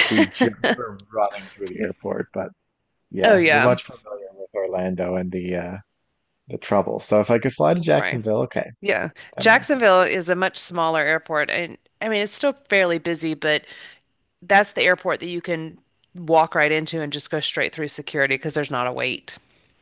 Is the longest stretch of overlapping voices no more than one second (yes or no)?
yes